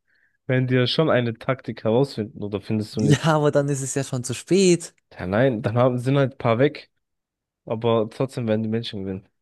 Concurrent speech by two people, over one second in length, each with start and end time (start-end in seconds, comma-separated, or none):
none